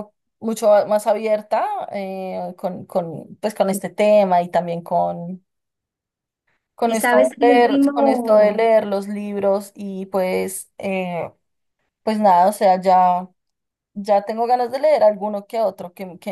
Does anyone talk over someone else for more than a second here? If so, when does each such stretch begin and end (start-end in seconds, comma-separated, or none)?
6.9-8.5